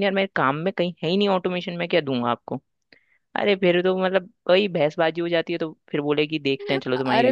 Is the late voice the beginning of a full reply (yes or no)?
yes